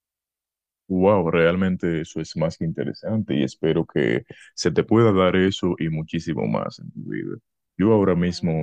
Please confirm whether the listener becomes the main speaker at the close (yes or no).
no